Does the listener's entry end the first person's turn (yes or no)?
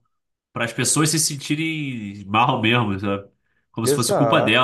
no